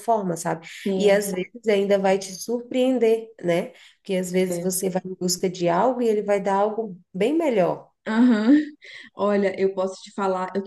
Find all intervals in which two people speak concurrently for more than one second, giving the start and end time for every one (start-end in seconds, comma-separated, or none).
none